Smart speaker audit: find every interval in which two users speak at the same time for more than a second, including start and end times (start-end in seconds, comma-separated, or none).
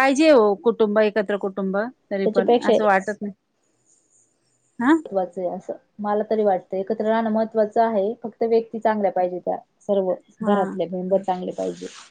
none